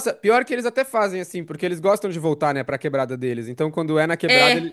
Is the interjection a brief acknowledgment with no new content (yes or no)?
yes